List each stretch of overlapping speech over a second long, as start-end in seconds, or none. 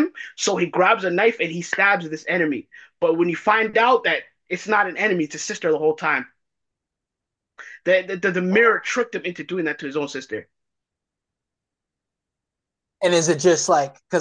none